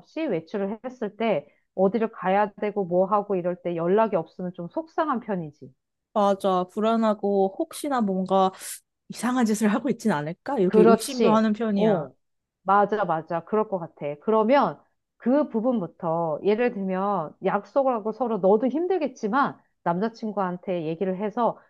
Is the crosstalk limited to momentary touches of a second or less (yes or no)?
no